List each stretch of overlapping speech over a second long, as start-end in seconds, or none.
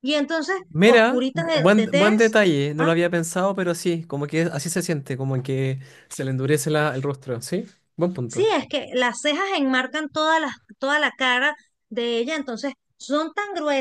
0.7-2.4